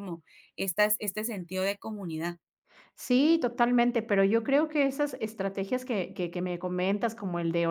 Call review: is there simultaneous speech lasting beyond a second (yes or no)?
no